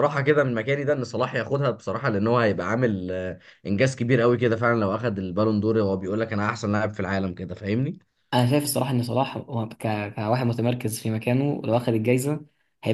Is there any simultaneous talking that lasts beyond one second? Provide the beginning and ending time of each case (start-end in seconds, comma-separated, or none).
none